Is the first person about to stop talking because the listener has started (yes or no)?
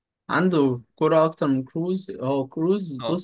yes